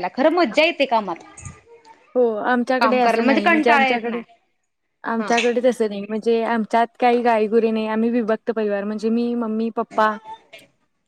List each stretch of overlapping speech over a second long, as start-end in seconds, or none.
2.8-4.2